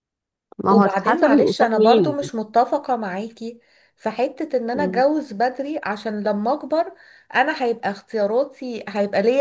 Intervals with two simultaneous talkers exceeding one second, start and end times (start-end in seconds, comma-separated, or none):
0.7-2.2